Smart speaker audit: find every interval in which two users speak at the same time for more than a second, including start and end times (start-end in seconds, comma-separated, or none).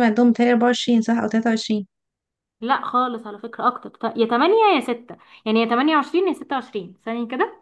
none